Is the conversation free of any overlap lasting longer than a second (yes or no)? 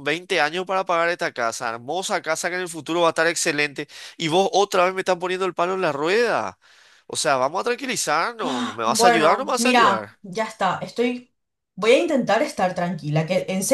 no